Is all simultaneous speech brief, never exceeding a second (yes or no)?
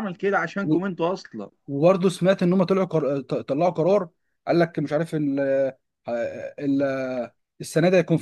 yes